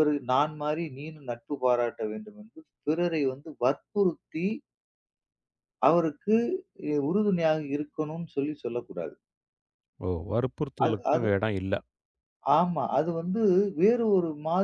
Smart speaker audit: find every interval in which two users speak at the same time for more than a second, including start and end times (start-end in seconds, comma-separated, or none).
none